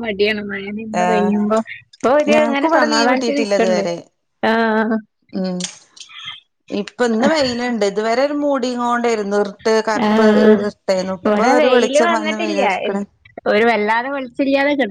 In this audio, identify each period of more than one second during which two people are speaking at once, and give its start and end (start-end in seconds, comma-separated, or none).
2.3-3.8